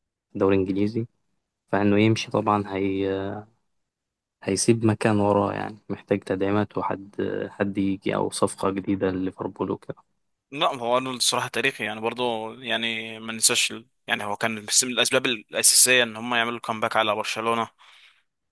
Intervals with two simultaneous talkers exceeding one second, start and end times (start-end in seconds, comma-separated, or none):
none